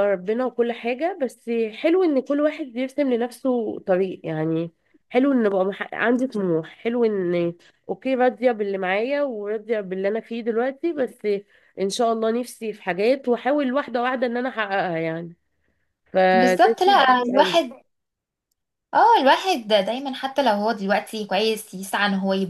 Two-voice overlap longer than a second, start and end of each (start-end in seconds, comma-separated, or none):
16.3-17.6